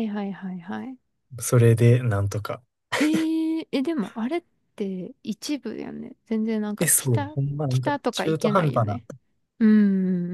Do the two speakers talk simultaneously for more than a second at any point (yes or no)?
yes